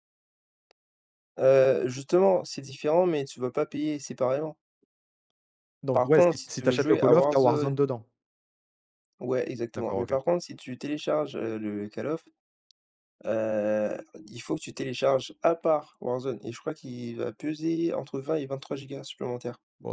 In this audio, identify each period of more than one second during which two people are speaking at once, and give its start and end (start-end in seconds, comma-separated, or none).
5.9-7.8